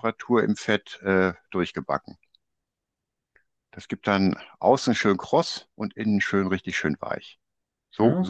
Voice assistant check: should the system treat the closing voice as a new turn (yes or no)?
yes